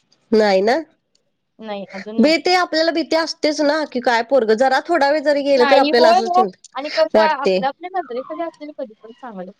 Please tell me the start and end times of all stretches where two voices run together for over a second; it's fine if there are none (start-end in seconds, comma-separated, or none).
5.6-7.6